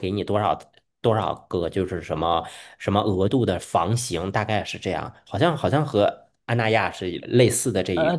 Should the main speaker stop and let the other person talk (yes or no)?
yes